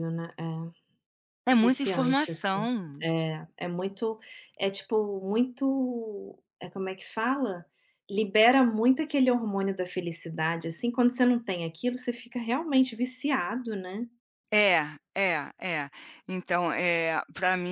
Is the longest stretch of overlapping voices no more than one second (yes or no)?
no